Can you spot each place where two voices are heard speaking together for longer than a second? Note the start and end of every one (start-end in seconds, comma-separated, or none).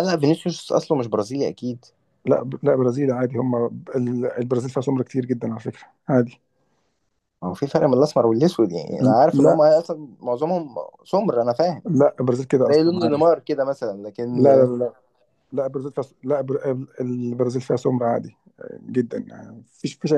none